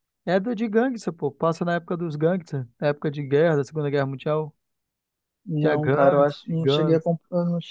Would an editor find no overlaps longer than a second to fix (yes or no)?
no